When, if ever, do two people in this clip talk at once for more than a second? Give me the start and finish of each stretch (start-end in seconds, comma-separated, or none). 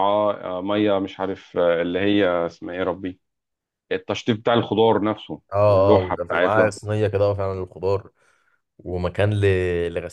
5.5-6.7